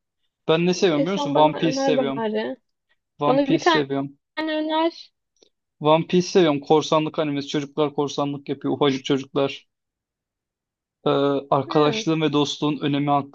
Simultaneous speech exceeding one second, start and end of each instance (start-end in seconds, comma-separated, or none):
0.9-2.2